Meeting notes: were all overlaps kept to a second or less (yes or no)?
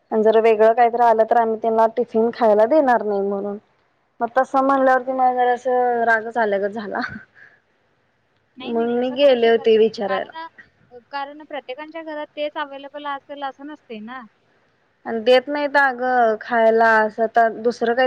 no